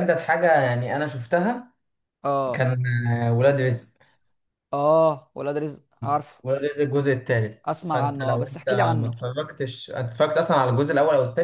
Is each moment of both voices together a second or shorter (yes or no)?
no